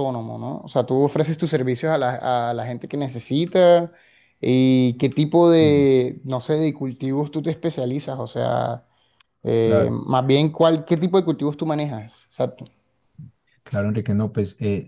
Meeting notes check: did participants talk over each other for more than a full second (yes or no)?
no